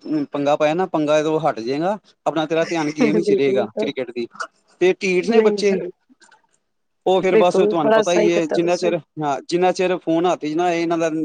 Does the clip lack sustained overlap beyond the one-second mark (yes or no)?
no